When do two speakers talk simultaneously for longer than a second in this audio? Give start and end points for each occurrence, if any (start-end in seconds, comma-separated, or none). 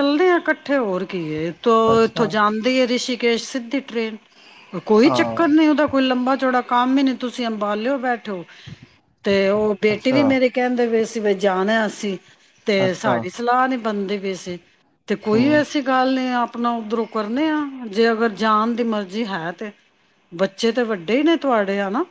none